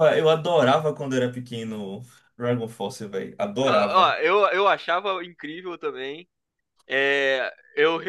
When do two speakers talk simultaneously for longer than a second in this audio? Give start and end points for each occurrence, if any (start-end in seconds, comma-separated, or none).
none